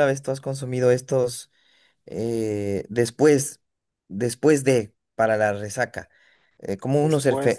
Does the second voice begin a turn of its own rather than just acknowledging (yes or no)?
no